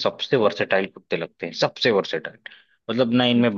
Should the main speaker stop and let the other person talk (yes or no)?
no